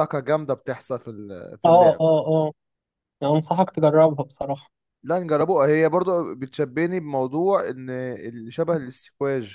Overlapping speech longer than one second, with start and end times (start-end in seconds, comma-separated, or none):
none